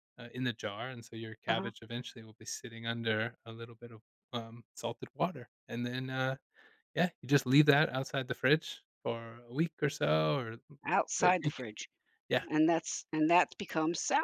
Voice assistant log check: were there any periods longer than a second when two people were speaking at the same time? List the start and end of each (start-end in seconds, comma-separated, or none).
none